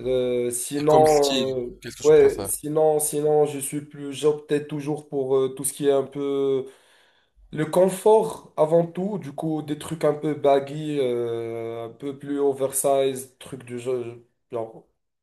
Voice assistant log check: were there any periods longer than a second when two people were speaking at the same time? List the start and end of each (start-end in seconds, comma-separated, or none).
0.8-2.5